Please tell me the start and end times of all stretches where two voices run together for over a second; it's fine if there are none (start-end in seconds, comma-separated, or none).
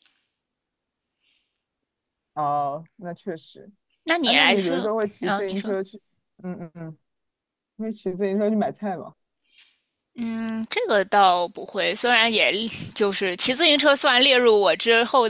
4.2-5.8